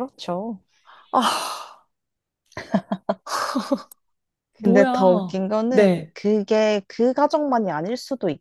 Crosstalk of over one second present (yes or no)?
yes